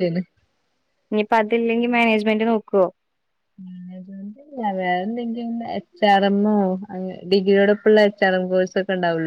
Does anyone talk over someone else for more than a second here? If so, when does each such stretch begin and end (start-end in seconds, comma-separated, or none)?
none